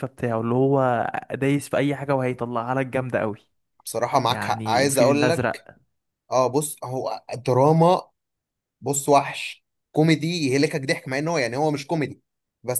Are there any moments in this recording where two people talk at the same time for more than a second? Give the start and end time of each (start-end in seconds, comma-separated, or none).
4.3-5.7